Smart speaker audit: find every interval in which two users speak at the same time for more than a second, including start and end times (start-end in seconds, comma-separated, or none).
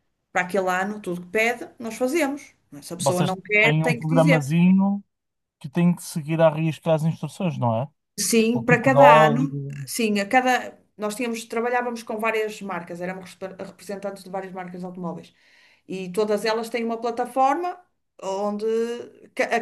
3.0-4.5, 8.5-9.9